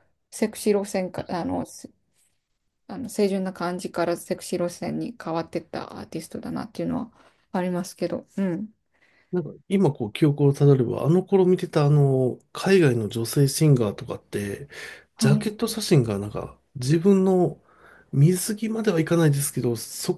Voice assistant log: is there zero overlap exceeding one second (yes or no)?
yes